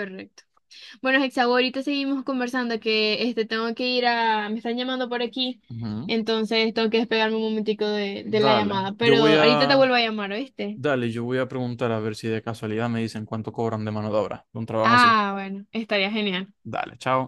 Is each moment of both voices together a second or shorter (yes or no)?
no